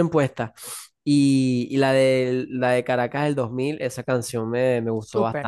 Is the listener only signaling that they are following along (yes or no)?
no